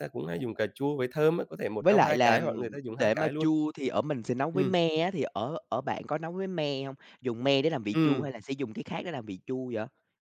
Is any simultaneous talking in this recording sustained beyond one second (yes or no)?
yes